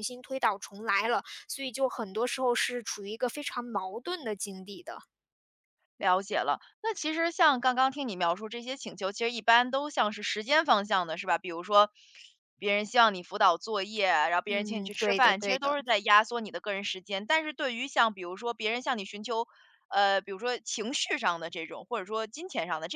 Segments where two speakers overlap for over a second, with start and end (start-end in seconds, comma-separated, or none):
14.5-15.8